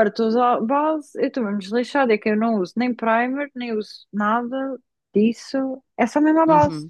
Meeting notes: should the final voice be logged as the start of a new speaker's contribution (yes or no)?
yes